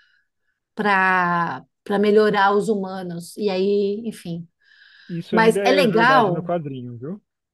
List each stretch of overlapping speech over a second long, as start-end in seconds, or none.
5.3-6.5